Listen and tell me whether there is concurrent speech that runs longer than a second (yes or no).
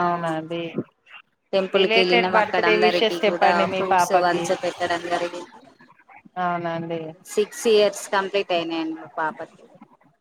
yes